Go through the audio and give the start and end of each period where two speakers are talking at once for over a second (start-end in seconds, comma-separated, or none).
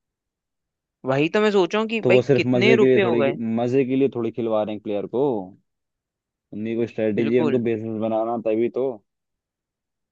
2.0-3.4